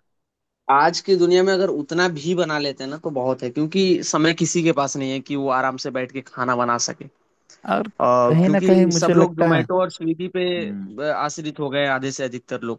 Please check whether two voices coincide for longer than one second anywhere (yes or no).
yes